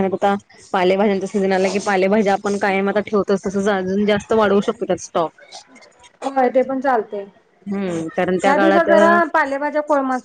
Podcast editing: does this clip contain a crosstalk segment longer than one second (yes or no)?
yes